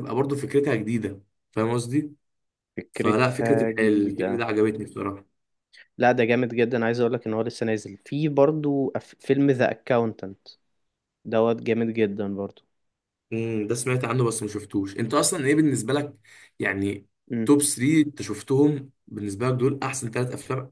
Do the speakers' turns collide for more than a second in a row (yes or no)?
yes